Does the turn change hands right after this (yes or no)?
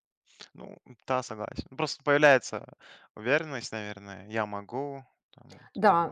yes